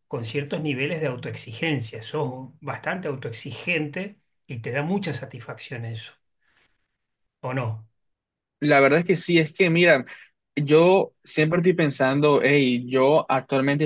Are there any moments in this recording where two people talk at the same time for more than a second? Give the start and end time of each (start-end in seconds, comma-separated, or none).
none